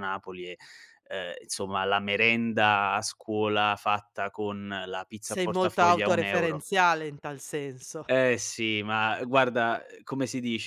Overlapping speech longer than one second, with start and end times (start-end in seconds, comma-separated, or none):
5.2-6.6